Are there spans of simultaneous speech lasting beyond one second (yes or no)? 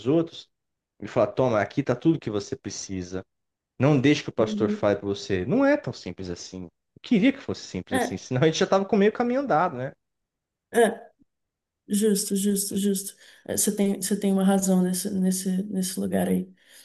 no